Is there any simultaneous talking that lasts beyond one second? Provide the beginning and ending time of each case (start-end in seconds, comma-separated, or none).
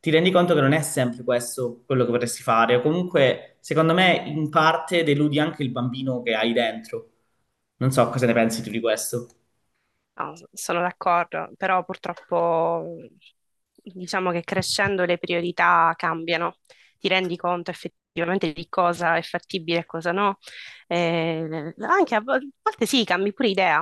none